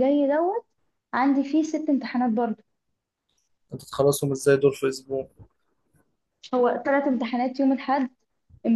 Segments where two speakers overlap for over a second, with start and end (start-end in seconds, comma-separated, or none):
none